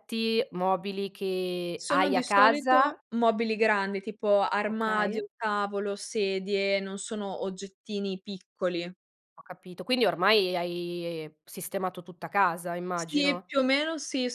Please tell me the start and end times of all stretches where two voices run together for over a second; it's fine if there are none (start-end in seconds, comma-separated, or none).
1.8-3.0